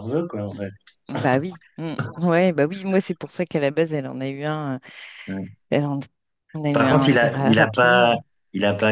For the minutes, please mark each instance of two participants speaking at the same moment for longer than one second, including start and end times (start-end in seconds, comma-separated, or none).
6.7-8.2